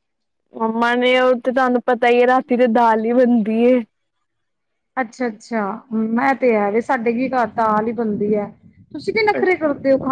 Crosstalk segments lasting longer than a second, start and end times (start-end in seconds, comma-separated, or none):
none